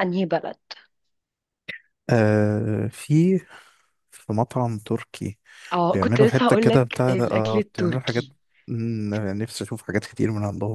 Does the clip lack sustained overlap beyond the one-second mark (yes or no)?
no